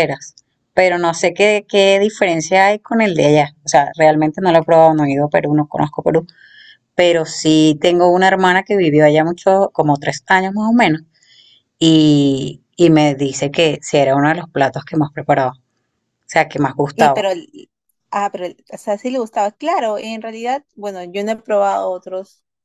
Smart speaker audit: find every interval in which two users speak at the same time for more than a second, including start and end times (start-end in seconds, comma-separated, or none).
none